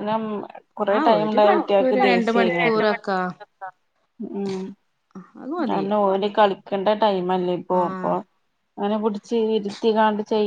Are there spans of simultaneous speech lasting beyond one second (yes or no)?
yes